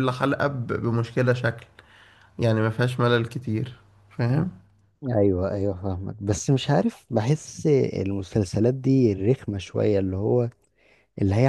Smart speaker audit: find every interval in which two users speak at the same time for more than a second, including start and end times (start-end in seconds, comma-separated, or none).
none